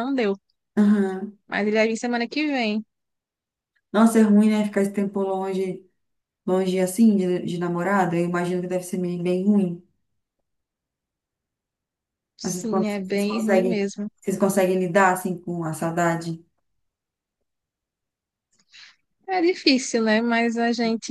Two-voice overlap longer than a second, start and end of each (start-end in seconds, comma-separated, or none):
12.4-14.1